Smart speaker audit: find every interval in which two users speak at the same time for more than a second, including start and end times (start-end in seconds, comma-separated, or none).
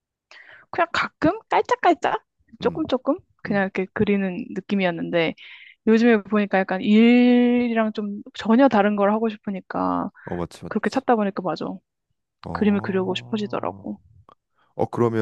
12.5-13.8